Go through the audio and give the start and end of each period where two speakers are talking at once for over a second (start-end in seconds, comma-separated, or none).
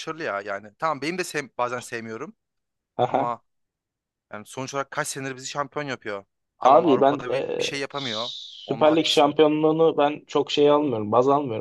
6.6-9.3